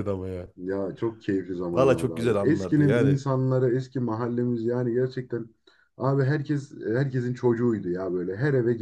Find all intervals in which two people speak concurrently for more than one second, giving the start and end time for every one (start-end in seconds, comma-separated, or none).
1.7-3.2